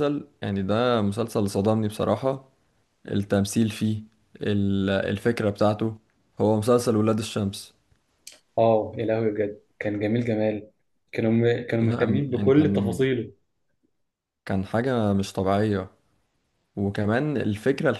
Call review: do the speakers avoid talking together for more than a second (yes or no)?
no